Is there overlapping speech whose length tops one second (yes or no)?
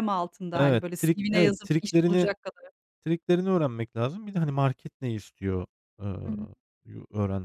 yes